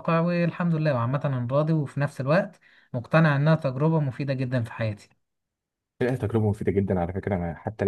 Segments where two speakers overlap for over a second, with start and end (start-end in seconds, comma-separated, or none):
none